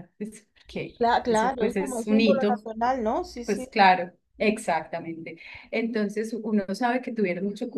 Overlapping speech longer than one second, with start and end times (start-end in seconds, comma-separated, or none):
1.0-2.6